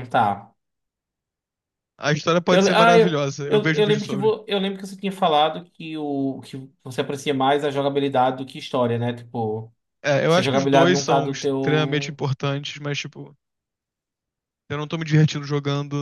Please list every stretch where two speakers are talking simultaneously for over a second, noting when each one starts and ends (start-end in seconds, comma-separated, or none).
2.5-4.3, 10.3-12.2